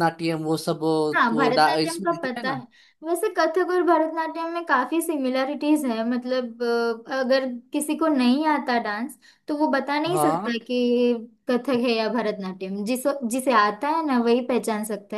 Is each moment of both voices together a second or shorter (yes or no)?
no